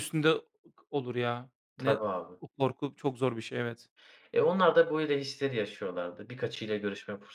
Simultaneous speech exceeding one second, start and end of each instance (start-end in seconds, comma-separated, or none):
none